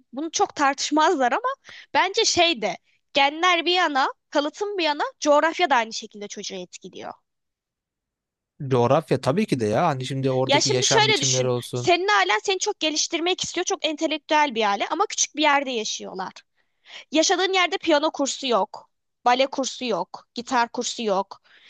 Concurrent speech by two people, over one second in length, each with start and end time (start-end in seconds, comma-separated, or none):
10.5-11.9